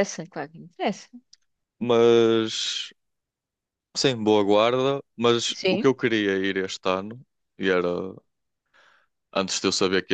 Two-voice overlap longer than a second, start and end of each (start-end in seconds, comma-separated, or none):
none